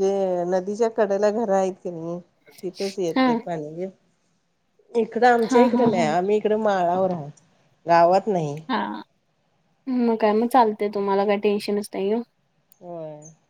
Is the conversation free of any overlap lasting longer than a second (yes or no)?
yes